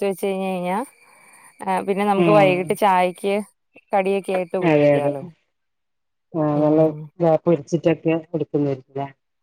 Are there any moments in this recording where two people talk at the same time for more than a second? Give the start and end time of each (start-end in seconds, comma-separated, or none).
none